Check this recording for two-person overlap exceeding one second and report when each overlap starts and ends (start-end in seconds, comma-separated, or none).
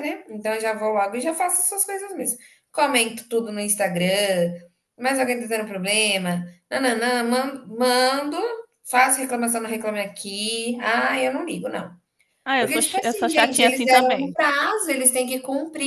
12.6-14.4